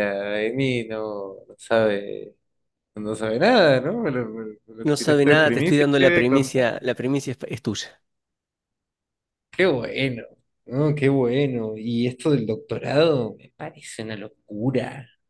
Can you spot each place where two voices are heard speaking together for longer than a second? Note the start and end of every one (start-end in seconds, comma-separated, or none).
4.8-6.6